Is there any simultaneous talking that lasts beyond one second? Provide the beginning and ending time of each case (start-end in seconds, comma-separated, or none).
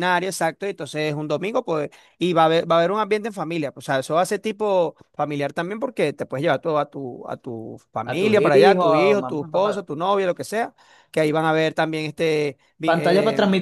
8.0-9.8